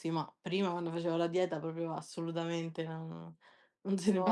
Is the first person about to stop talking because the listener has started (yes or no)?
no